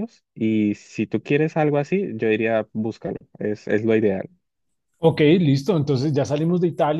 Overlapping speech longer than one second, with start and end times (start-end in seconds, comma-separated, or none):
none